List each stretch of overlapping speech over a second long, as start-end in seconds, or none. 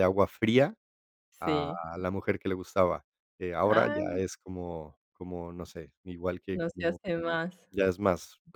none